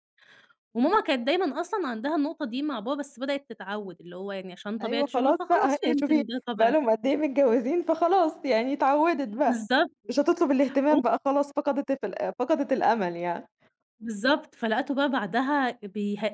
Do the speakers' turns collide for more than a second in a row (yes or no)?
yes